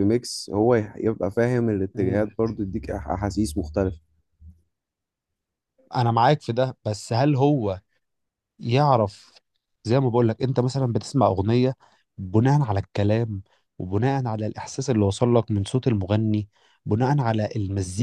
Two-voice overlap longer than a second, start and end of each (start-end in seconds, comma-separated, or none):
none